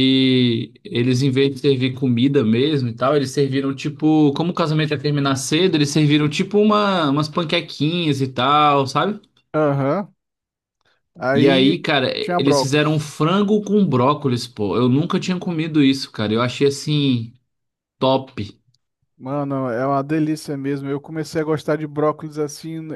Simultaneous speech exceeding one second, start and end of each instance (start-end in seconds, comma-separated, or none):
11.3-13.0